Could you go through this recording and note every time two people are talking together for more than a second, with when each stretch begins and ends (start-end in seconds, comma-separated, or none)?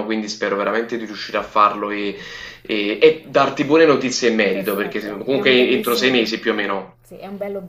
4.5-6.3